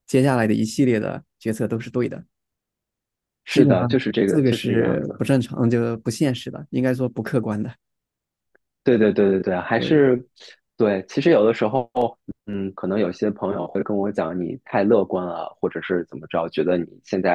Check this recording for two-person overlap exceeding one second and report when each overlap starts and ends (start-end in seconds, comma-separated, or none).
3.5-5.2